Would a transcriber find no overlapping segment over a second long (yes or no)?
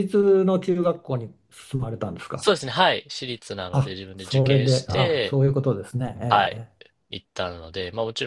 no